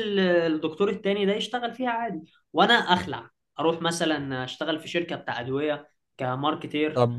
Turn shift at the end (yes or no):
yes